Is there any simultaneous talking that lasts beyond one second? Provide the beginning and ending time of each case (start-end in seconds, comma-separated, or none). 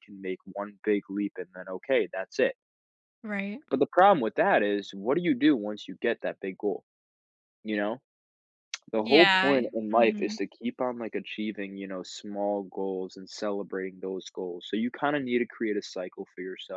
9.0-10.4